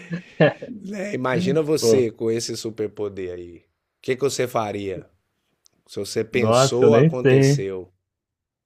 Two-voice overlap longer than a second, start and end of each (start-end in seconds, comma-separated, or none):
6.3-7.7